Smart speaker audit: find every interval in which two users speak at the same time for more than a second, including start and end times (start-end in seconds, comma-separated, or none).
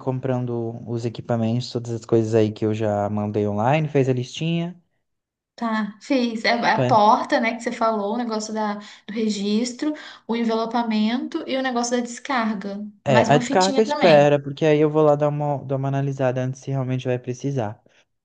13.0-14.2